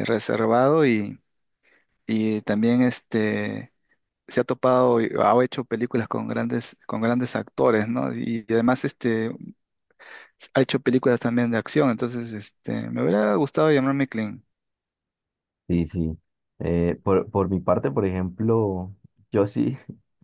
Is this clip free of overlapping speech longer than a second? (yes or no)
yes